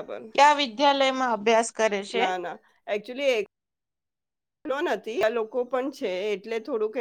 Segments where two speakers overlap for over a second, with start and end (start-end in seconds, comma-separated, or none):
none